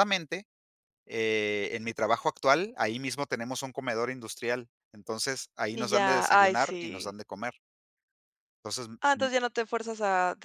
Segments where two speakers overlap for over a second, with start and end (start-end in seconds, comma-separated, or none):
5.7-7.1